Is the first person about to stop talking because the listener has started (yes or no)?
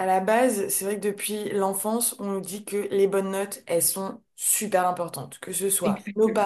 no